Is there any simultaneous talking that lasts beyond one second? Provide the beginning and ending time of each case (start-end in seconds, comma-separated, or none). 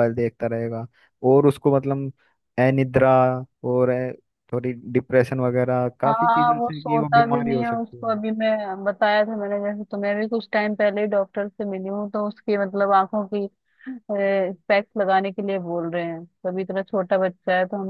6.1-8.2